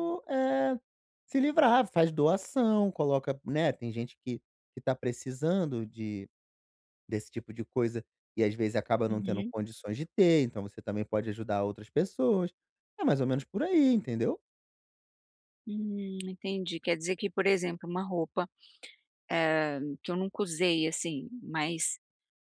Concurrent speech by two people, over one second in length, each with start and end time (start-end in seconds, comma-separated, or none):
none